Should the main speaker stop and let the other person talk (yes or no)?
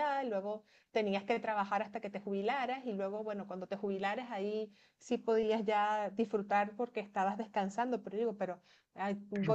no